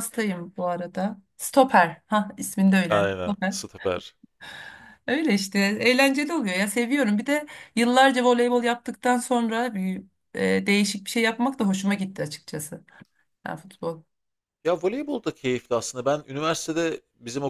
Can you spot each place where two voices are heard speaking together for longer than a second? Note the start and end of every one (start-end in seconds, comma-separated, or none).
none